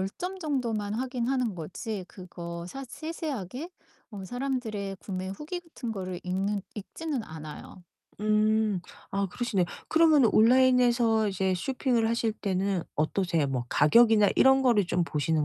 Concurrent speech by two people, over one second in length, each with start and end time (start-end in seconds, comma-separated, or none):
none